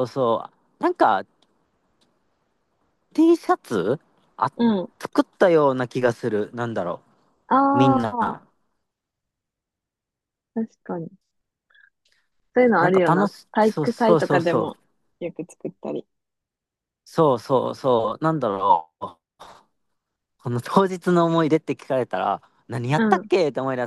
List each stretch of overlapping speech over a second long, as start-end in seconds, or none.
12.8-14.8